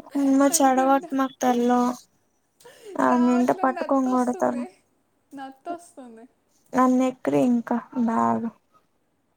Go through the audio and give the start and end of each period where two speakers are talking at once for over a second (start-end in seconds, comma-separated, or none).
3.1-4.6